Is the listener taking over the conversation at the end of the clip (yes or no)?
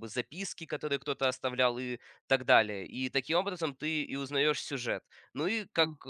no